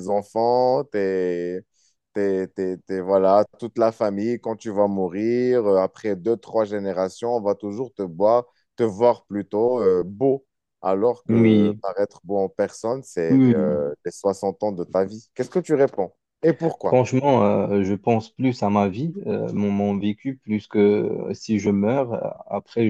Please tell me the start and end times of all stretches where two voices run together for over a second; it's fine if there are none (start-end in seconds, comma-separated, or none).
none